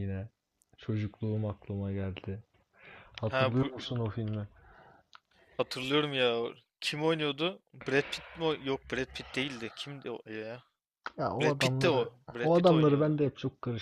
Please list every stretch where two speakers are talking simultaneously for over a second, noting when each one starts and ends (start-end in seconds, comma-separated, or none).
11.4-13.2